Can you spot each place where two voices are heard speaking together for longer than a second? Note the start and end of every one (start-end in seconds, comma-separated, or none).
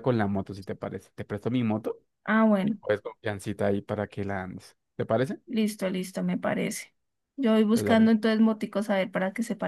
none